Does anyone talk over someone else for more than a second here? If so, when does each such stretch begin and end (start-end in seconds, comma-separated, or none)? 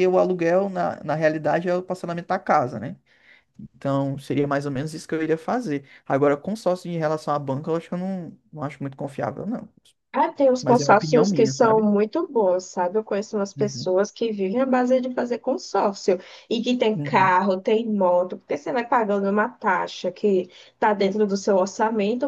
10.6-11.9